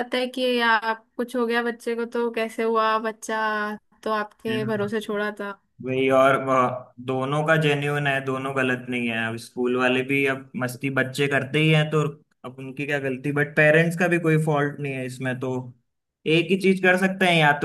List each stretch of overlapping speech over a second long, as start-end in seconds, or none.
none